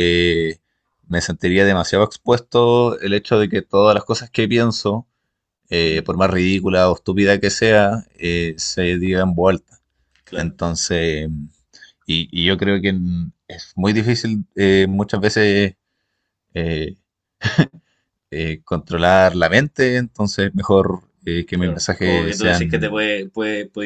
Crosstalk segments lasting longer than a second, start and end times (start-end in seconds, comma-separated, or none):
21.5-23.1